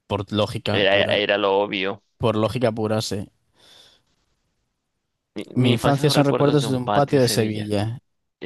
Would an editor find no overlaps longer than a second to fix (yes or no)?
no